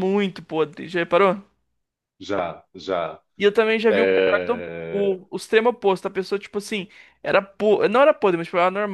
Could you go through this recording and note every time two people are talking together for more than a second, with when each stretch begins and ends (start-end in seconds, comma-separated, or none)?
3.9-5.1